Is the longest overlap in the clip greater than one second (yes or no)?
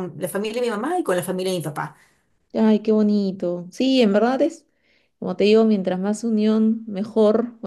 no